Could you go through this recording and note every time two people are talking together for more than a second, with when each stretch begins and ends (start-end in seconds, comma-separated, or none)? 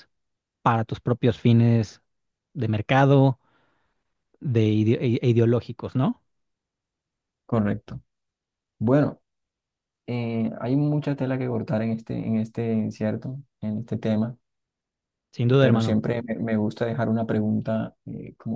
none